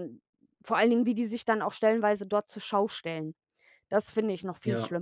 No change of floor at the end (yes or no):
no